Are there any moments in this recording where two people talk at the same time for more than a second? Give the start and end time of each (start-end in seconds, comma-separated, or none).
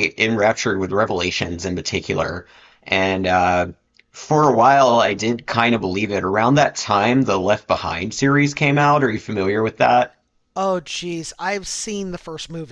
none